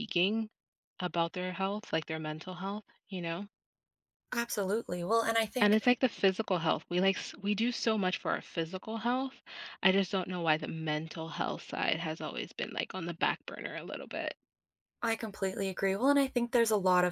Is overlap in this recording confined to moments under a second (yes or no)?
yes